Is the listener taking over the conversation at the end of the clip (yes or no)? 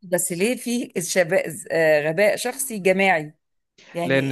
yes